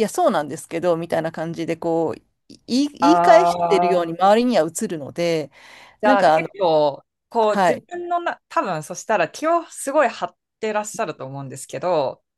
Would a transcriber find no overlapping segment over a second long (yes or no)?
no